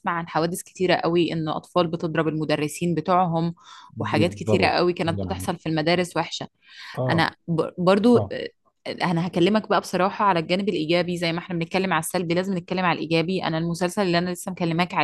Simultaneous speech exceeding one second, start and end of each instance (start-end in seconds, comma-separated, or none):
4.0-5.5